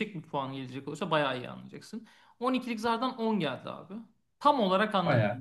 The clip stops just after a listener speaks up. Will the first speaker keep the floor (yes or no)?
yes